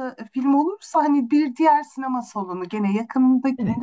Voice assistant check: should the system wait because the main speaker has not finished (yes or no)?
yes